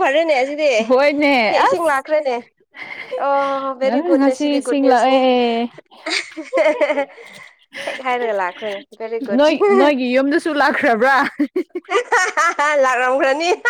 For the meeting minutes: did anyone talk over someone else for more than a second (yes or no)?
yes